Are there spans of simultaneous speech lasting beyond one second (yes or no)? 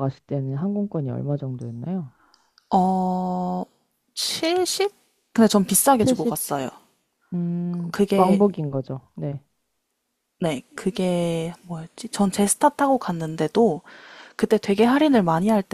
no